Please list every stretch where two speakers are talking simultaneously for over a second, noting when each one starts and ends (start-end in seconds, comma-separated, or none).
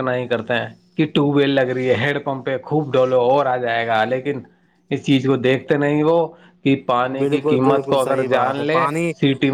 7.2-8.8